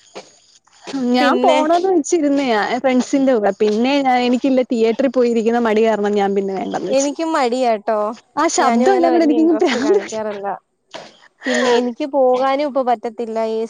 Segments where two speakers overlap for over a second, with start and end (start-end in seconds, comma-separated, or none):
8.6-10.2